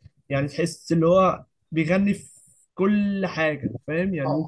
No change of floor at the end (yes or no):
yes